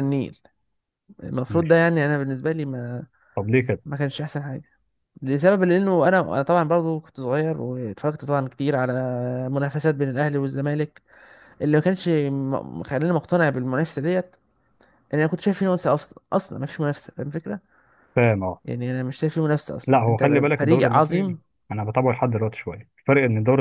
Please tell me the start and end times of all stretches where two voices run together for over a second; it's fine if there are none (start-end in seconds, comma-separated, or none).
19.9-21.4